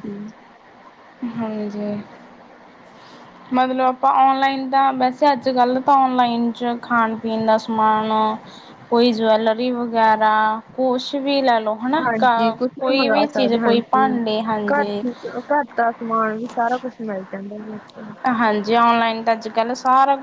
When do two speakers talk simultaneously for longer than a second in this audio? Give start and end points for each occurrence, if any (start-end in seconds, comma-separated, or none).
12.0-14.1